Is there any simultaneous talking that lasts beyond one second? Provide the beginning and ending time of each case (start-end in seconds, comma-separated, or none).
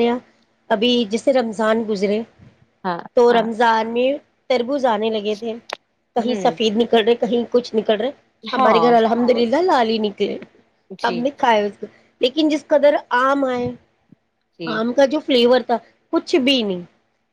none